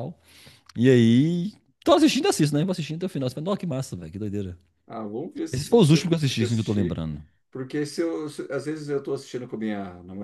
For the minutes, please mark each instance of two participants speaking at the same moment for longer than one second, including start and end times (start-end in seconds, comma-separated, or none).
5.5-7.0